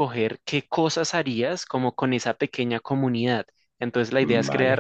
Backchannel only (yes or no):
yes